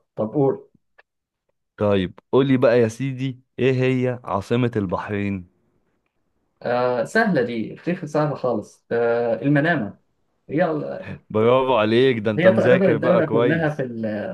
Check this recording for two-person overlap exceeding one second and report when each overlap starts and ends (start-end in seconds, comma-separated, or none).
12.4-13.8